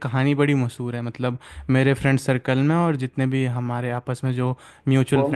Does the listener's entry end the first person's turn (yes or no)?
no